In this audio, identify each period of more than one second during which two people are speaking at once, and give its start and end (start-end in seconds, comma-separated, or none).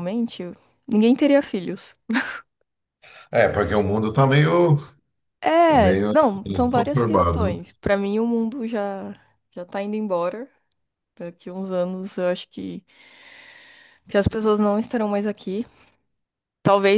5.7-7.6